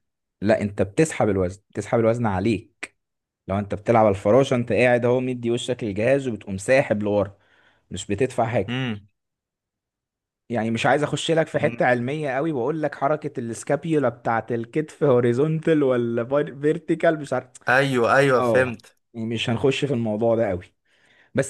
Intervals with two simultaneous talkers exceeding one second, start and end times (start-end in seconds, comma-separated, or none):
none